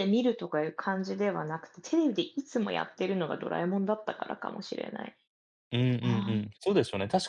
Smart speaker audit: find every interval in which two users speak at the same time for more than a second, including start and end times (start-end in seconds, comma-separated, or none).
none